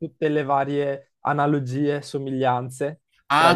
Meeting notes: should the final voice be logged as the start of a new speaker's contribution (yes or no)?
yes